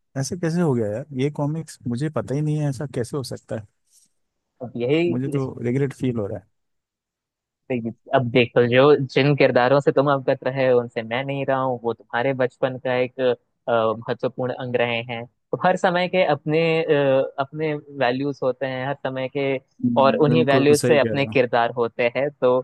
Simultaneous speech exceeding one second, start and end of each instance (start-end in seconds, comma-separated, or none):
20.0-21.4